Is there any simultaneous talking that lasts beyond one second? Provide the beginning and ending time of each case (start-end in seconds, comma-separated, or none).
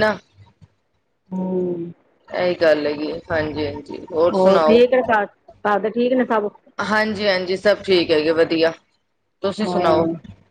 none